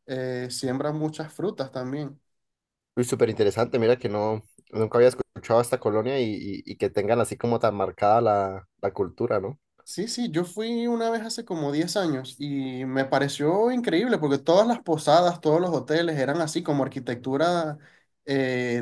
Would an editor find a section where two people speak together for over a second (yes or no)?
no